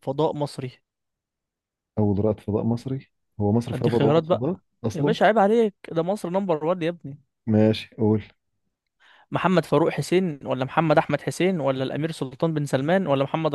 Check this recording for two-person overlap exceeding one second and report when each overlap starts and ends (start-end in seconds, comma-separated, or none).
3.7-5.2